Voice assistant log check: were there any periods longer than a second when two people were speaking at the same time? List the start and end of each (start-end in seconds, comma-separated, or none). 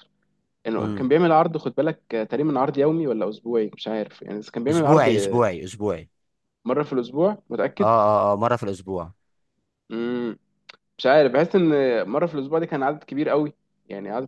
none